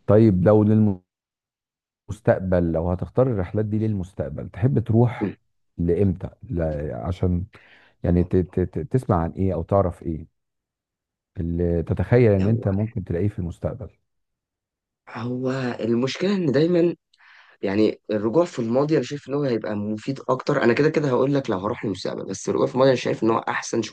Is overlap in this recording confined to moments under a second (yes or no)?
yes